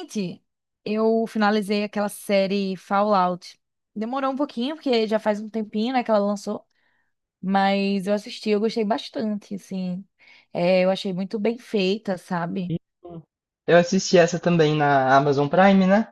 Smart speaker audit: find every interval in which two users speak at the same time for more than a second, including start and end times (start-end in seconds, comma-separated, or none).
none